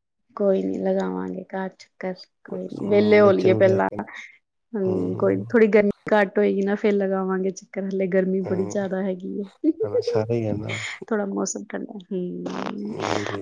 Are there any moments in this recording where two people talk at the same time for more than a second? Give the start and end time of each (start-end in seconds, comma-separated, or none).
2.5-3.9